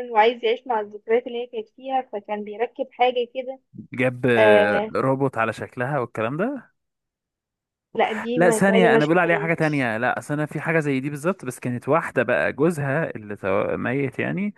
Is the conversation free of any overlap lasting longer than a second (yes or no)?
no